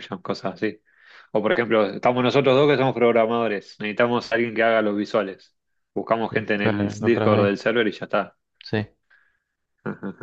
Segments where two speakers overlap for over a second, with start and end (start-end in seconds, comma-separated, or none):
6.3-7.6